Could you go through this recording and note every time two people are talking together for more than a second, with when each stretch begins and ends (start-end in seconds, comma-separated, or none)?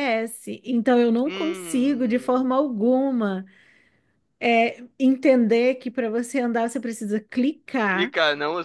1.2-2.5